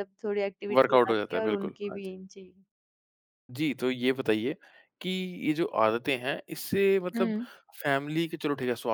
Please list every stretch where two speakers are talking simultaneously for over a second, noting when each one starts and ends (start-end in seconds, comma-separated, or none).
0.8-2.1